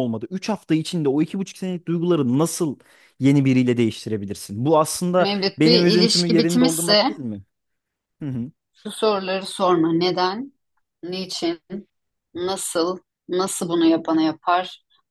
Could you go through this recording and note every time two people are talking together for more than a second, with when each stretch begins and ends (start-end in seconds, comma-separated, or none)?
5.2-7.2